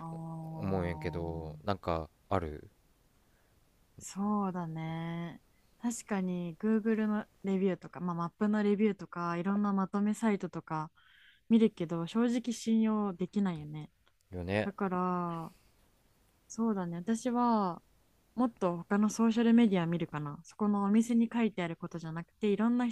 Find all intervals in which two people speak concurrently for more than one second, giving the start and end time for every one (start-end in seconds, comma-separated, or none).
none